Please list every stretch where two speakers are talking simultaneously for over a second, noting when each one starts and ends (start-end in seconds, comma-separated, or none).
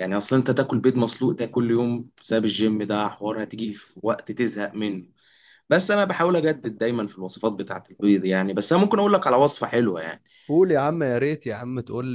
none